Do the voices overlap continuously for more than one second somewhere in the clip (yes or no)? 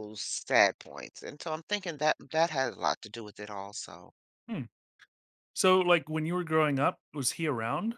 no